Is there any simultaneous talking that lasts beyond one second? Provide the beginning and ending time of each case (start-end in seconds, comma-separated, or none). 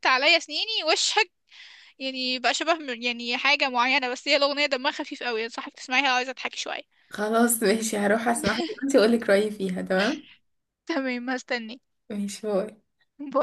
none